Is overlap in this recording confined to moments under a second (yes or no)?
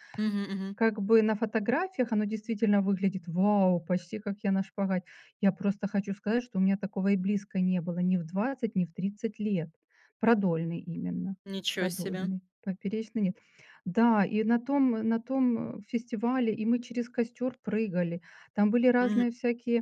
yes